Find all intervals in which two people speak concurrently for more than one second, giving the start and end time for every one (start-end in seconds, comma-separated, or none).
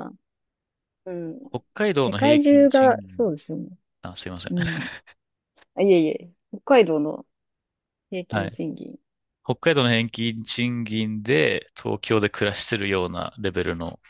2.0-3.3